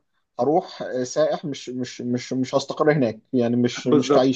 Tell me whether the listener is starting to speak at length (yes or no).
yes